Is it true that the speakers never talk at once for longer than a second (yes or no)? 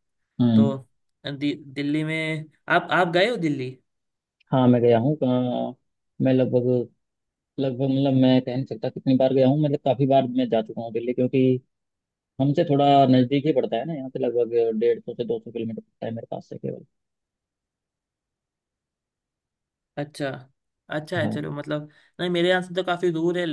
yes